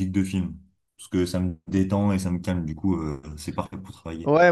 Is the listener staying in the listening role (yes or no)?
no